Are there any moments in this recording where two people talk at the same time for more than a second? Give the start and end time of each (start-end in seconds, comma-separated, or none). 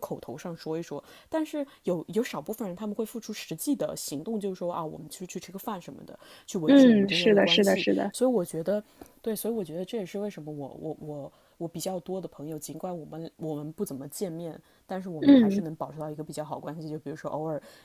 6.7-8.1